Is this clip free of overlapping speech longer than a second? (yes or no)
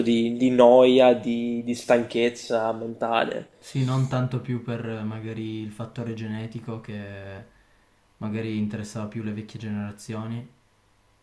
yes